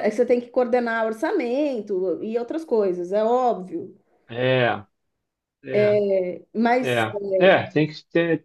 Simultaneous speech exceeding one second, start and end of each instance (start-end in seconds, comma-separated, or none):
none